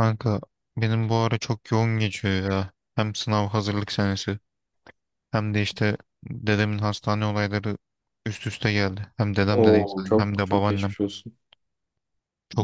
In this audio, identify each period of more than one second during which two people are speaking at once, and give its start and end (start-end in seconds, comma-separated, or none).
9.5-10.9